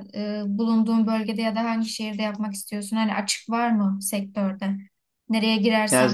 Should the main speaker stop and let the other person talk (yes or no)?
no